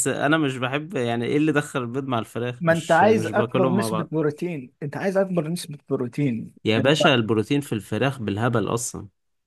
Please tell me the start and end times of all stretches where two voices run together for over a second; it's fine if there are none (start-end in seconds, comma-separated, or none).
2.6-4.1